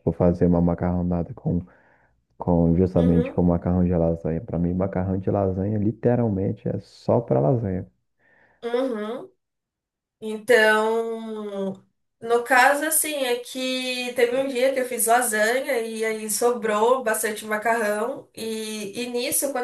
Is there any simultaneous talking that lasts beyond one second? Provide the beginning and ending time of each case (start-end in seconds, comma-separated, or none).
none